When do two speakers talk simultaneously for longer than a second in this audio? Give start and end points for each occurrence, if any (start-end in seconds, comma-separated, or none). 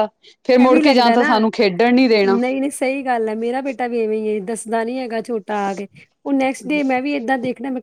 0.6-2.4